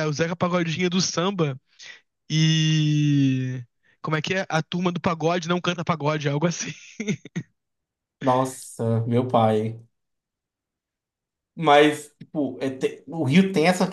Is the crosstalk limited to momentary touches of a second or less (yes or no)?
yes